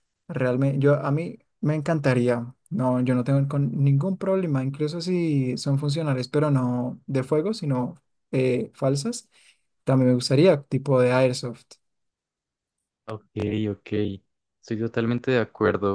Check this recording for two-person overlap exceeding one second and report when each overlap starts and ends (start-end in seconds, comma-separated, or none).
none